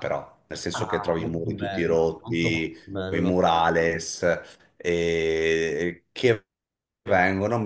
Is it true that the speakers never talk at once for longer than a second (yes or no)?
no